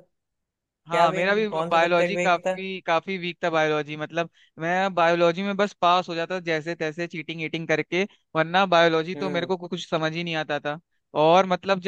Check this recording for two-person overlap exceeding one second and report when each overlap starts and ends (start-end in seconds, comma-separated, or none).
0.9-2.6